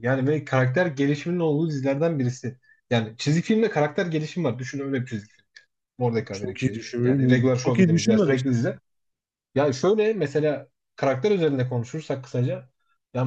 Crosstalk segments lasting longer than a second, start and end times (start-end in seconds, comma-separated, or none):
6.3-8.6